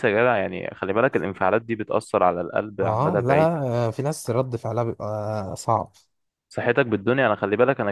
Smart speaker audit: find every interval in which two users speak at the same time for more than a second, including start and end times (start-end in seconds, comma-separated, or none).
none